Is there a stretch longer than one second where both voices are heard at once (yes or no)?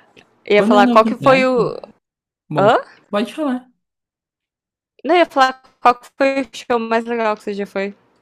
yes